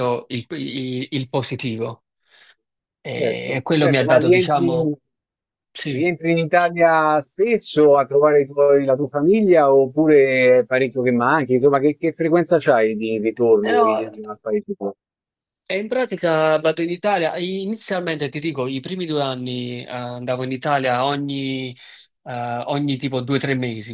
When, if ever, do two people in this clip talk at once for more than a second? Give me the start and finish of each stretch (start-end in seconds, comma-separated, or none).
3.1-4.7